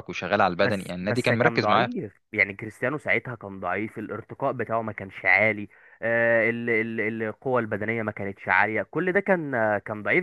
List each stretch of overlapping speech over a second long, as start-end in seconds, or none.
0.6-1.9